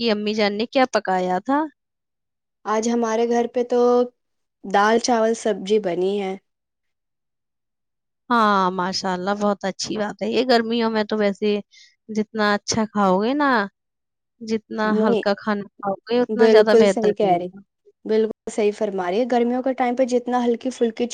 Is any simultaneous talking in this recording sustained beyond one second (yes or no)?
yes